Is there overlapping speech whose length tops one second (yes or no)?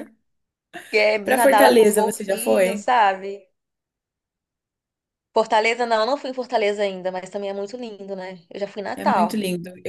yes